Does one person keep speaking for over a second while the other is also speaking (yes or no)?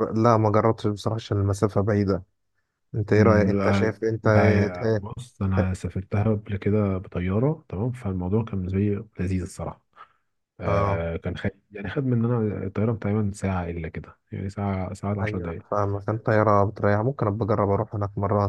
yes